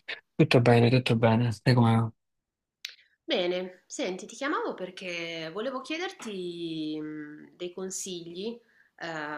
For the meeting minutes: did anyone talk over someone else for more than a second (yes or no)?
no